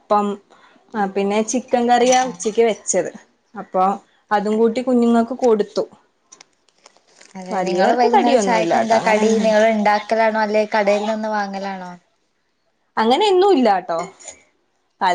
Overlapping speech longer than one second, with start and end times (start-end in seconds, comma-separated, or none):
7.5-9.2